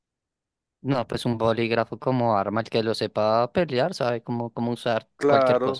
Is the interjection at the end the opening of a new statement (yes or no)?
yes